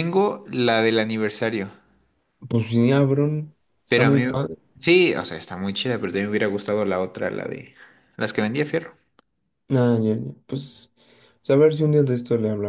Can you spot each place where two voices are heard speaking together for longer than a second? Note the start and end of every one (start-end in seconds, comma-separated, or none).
none